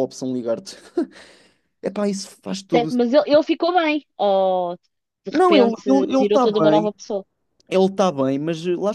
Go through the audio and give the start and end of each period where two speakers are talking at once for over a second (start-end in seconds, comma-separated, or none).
5.3-6.9